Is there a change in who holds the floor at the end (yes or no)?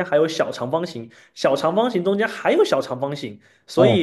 no